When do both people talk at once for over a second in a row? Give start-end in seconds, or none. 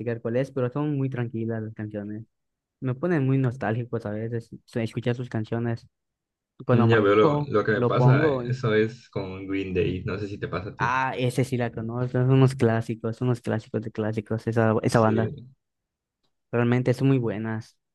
6.7-8.6